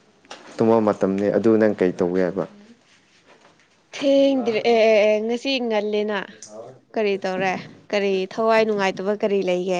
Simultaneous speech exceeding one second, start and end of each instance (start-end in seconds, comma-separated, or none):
none